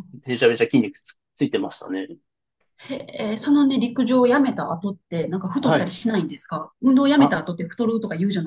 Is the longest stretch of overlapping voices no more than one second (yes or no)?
yes